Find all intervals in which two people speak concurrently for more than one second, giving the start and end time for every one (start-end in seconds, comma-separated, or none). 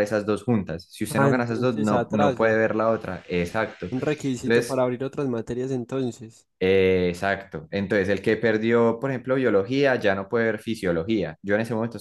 1.1-2.6